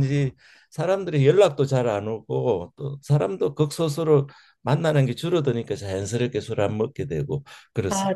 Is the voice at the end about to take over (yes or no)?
yes